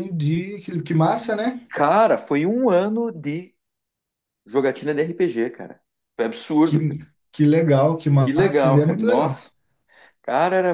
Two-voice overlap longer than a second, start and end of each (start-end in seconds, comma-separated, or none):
8.2-9.5